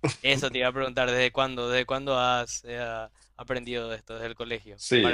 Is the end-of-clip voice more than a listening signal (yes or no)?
yes